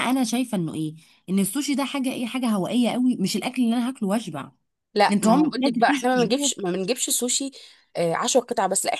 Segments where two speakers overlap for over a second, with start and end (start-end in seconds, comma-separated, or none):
5.1-6.5